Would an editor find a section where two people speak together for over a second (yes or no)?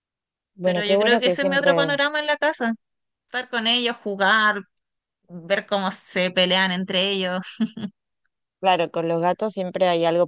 yes